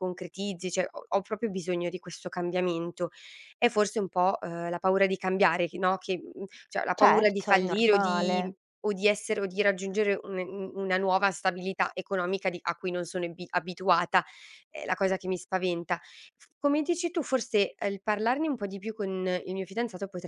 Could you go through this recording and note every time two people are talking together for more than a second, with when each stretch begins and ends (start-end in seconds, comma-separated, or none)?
6.9-8.6